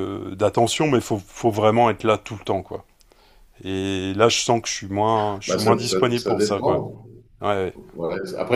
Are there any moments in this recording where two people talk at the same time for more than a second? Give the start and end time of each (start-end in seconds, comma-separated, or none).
5.5-6.8